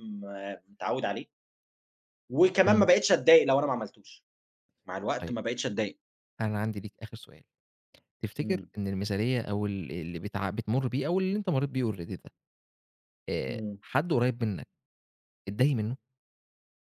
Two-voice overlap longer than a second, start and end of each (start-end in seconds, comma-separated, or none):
none